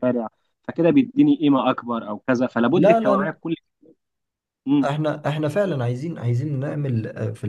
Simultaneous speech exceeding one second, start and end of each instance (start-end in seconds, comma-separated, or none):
none